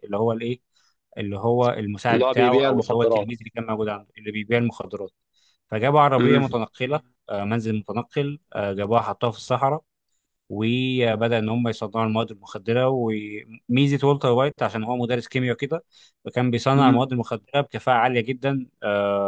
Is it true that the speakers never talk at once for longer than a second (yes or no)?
no